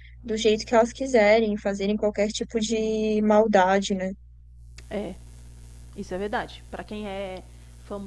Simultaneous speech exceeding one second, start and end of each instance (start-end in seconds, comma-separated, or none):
none